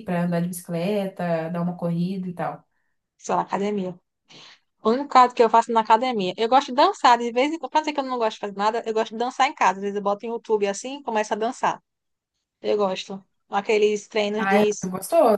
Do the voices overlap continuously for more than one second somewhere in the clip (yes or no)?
no